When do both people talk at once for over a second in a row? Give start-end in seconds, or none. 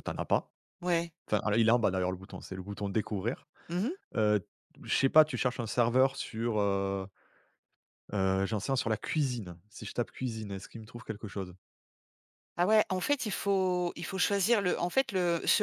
none